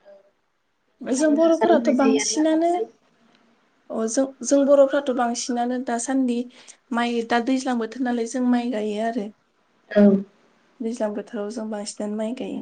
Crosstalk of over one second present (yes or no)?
yes